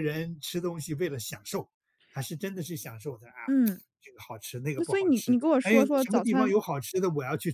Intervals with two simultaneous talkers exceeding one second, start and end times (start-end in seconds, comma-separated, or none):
4.8-6.5